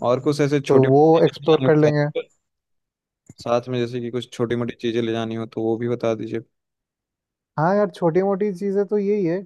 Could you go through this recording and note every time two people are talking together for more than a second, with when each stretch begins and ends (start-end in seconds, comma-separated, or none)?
0.7-2.1